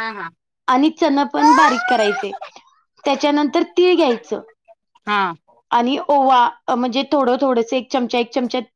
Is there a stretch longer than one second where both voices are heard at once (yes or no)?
yes